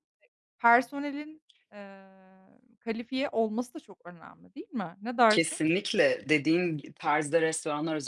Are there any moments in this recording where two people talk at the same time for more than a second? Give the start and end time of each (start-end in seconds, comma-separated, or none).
none